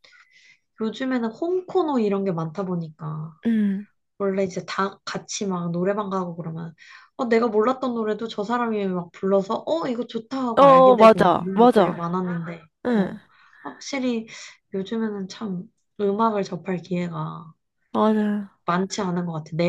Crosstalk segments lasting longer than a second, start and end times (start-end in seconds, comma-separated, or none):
10.6-12.0